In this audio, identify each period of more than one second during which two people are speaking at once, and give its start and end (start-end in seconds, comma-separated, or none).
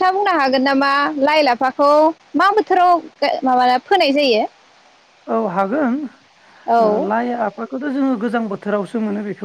none